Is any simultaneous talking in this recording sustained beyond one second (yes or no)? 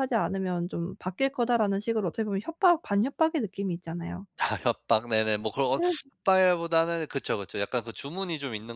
no